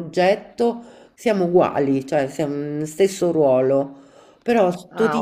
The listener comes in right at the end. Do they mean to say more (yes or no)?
no